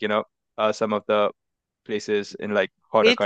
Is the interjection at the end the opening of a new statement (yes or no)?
yes